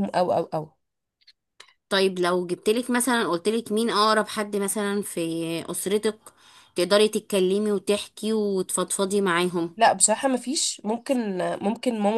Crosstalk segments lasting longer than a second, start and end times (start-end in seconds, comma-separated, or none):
none